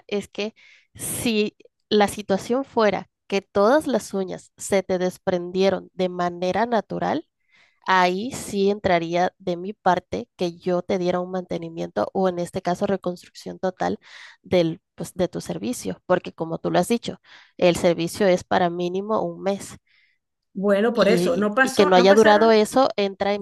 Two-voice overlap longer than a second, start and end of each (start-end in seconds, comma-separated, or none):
20.9-22.6